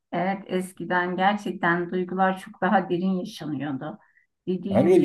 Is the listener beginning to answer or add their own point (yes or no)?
yes